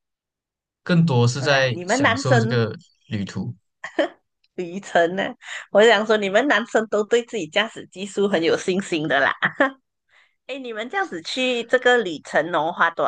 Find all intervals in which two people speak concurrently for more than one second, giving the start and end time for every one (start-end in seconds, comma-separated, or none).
1.3-2.6